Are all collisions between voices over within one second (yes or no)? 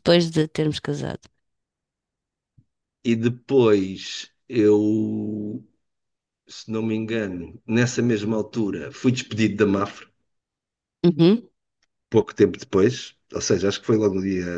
yes